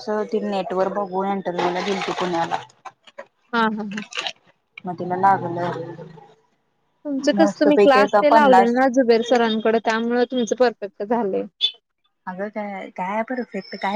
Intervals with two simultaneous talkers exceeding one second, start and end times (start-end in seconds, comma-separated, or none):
none